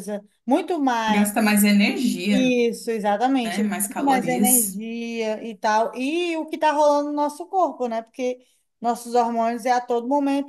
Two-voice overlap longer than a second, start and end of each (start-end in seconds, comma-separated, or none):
3.4-4.8